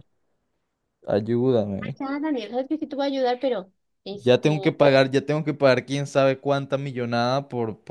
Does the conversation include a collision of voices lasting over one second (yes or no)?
no